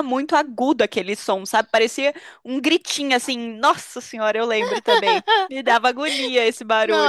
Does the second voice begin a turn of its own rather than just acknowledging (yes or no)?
yes